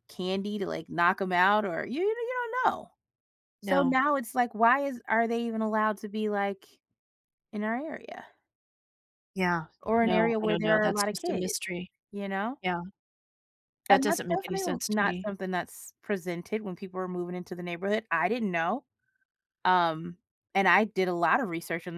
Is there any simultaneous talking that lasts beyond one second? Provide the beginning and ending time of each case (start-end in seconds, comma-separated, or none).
10.0-11.6, 13.9-15.3